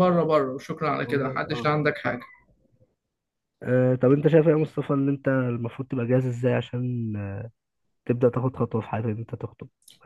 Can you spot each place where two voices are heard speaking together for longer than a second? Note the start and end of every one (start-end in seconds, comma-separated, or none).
none